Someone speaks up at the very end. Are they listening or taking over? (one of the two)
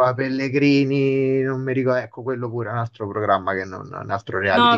taking over